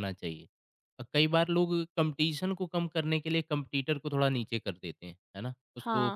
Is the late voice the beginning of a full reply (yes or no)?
yes